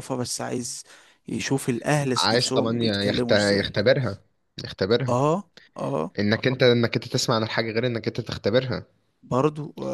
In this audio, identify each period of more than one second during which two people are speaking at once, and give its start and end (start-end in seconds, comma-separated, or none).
2.2-3.8